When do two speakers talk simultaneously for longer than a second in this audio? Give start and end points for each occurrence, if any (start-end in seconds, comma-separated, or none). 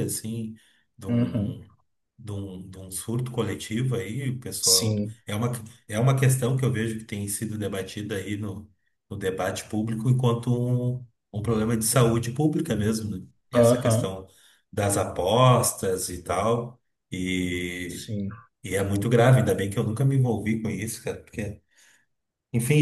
none